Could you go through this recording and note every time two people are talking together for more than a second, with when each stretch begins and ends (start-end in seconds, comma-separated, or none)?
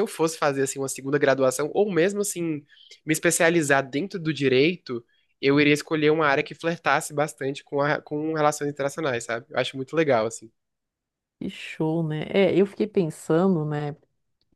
none